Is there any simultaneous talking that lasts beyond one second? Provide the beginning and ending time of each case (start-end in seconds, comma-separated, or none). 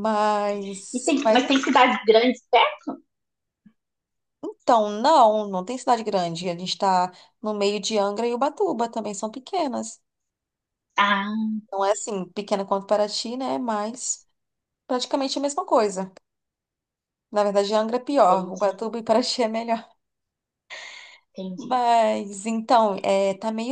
none